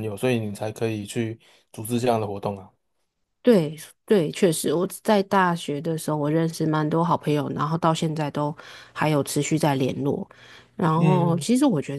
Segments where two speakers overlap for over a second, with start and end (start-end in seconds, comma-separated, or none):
none